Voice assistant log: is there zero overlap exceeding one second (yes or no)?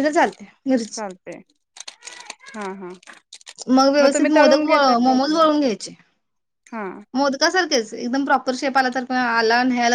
no